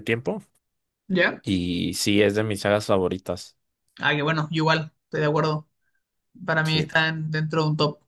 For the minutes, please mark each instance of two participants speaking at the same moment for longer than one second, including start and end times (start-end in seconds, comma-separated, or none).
none